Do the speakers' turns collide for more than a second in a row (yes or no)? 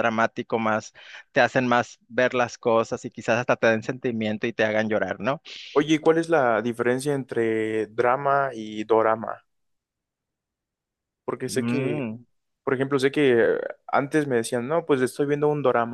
no